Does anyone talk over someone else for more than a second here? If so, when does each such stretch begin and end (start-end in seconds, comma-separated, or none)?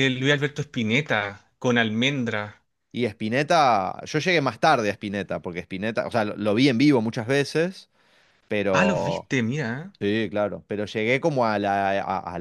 none